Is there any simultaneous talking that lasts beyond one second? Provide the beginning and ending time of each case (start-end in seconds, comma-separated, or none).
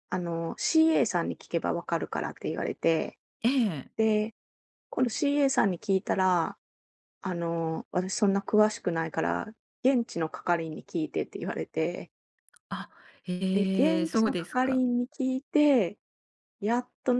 13.5-14.8